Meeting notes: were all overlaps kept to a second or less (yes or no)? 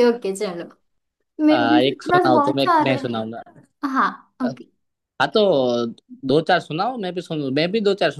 no